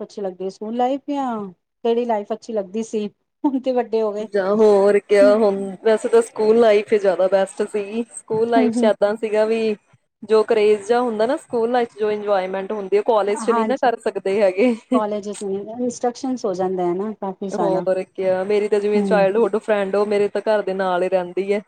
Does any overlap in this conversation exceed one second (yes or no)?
no